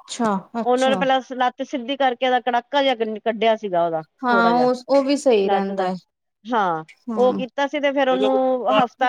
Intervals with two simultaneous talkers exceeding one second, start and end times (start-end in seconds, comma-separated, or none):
none